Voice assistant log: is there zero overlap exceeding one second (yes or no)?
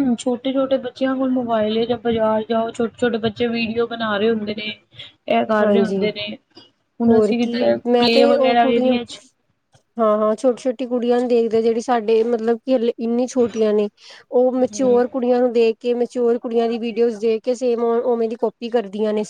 no